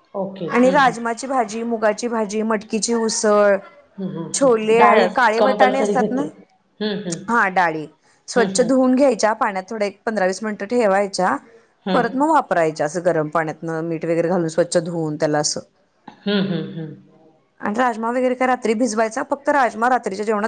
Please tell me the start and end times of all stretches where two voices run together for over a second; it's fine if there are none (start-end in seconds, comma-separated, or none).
4.4-6.2